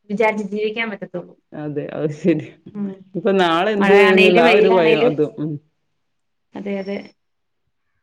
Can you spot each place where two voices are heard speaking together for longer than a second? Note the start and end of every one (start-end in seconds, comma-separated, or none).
3.8-5.1